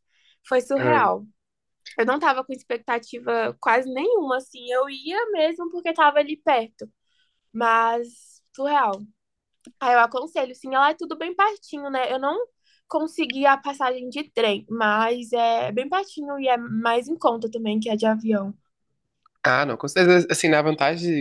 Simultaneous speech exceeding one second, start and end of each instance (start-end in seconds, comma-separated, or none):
none